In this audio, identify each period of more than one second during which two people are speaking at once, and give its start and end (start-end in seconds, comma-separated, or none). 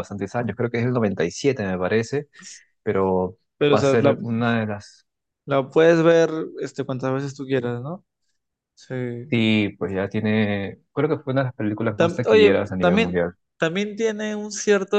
11.9-13.3